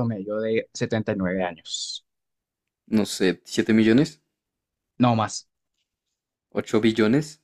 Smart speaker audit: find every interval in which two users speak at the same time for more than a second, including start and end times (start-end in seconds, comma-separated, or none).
none